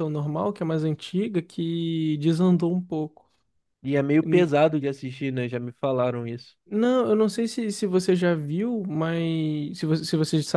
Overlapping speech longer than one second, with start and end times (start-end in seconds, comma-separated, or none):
none